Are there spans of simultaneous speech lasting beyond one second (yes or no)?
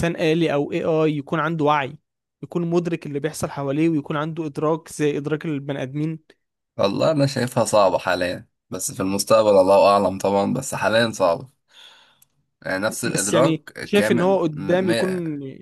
yes